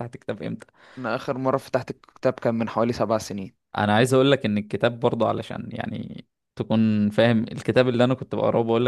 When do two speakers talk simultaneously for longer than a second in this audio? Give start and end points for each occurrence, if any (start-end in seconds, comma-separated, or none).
none